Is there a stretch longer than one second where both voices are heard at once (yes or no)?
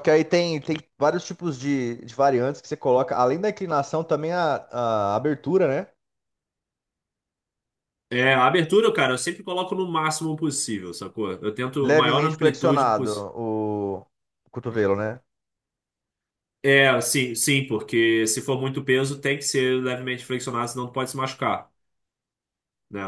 yes